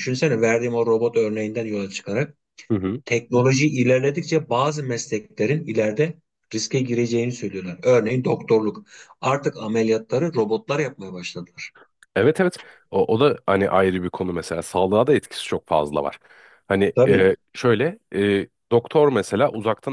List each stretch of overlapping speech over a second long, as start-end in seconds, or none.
none